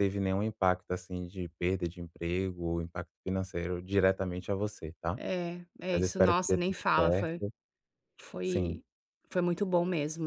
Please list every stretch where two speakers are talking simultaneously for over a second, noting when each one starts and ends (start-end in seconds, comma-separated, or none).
5.9-7.4